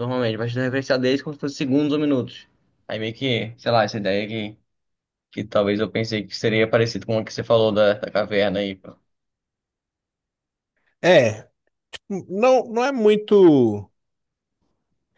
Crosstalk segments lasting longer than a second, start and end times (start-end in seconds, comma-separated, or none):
none